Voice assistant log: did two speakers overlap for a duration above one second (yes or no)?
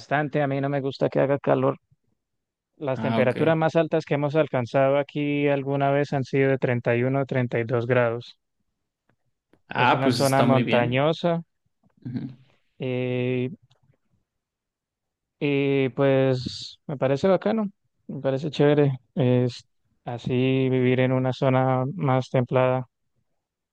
yes